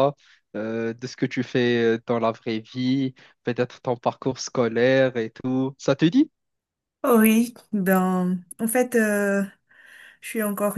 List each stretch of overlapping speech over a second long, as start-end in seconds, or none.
none